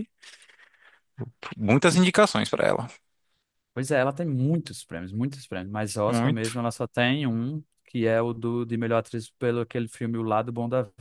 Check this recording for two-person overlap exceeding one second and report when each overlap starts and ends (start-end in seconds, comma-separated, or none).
none